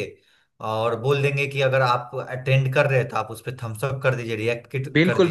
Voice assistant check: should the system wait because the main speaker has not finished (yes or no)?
no